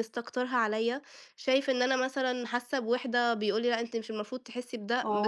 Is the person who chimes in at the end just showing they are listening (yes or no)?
no